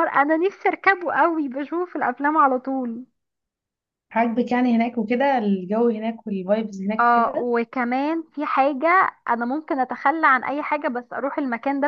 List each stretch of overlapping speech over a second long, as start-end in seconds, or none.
none